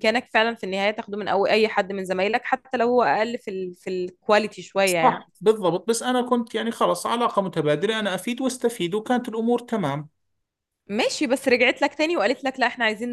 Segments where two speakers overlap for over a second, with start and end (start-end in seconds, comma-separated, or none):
none